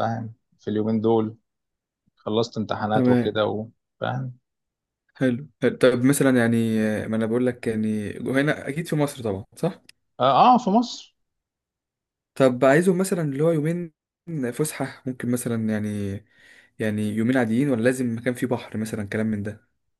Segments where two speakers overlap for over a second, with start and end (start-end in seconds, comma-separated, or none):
none